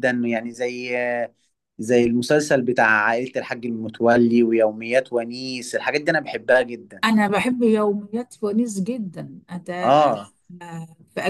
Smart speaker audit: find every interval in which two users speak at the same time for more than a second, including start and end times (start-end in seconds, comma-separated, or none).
none